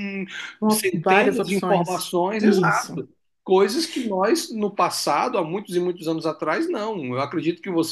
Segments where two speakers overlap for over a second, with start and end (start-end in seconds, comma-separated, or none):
0.7-3.0